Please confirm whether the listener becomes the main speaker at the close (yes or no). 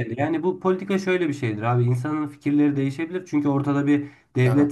no